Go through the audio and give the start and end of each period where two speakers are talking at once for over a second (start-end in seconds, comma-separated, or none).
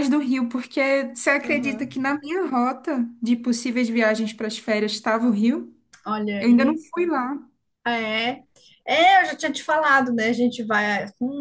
none